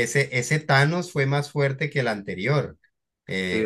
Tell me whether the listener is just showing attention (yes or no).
yes